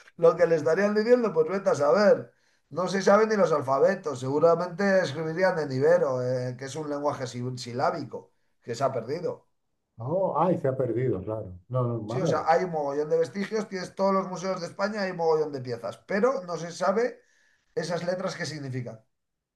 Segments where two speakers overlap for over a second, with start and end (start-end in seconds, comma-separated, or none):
none